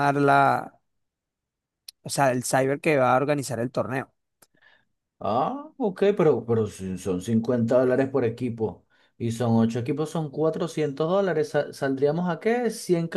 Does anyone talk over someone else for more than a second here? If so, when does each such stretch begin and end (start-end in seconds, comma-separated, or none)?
none